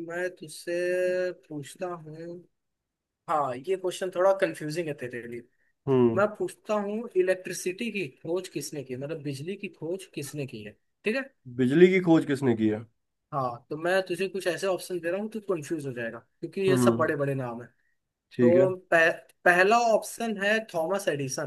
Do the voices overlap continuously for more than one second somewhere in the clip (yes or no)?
no